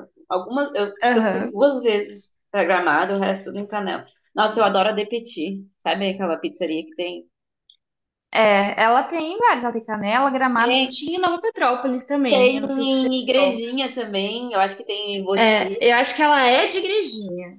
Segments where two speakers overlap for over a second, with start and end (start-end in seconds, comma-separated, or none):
12.3-13.6